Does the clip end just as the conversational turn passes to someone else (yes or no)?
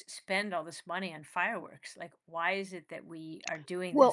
yes